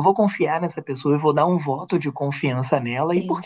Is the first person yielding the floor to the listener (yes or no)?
no